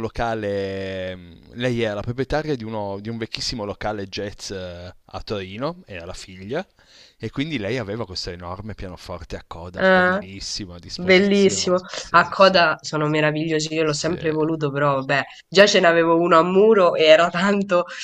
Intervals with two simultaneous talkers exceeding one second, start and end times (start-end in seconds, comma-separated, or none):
11.0-12.6